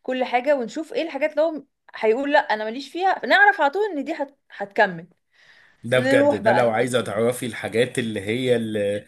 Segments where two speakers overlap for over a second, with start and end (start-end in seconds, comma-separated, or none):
6.0-7.2